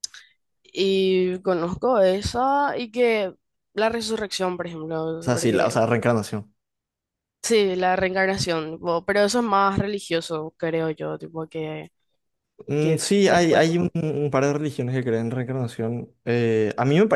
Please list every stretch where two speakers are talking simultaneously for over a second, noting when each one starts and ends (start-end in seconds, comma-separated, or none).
12.8-14.2